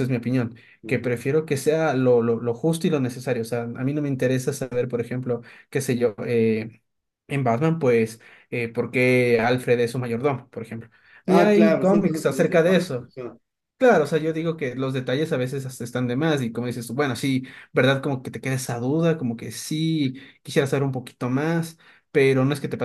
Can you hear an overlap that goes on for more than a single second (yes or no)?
yes